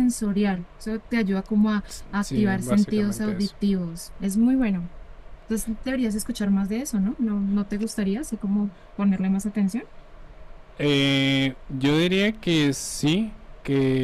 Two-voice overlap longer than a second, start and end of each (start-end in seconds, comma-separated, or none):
2.2-3.5